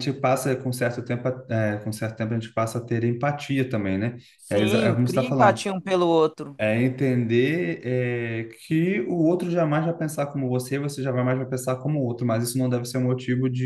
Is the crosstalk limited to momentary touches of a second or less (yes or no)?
no